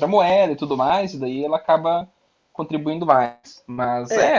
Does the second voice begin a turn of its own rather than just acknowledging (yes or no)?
no